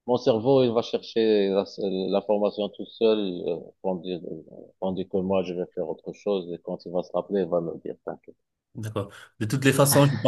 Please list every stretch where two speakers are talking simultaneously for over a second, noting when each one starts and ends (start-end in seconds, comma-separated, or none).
none